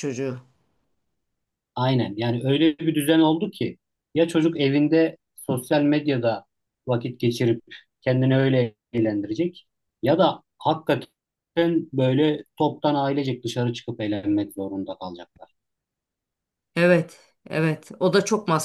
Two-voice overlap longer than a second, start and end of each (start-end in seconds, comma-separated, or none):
none